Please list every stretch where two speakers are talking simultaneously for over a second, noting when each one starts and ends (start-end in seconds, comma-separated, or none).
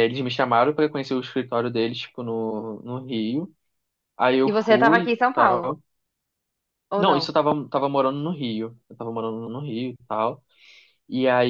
4.5-5.7